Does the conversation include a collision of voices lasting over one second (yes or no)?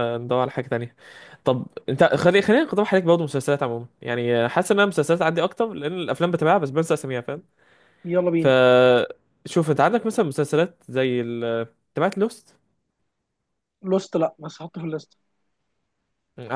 no